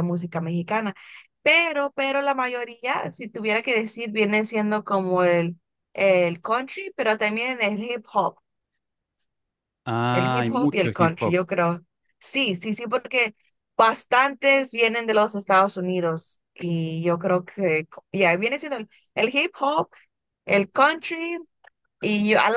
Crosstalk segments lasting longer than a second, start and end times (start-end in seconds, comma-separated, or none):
10.1-11.4